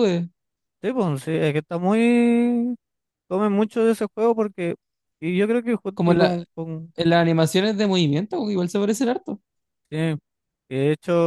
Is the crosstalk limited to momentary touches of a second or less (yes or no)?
yes